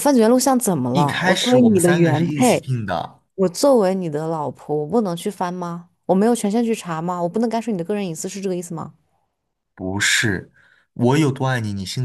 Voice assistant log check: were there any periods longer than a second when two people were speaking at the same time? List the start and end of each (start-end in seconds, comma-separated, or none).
0.9-2.8